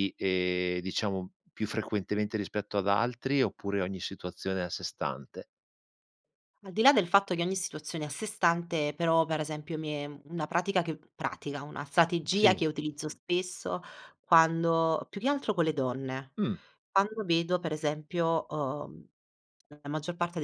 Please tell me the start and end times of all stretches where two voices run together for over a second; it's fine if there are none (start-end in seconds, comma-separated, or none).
none